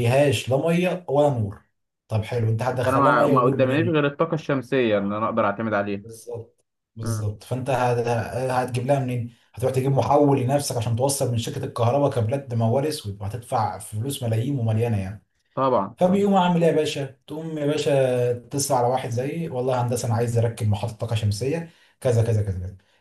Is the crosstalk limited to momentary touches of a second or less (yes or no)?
no